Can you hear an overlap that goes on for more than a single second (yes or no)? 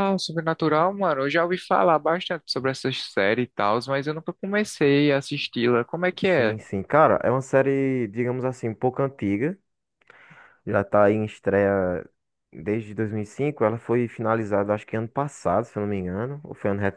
no